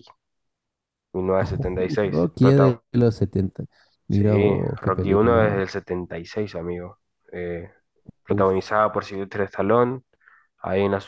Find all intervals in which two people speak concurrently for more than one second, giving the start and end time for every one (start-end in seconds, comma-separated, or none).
1.4-2.8, 4.1-5.6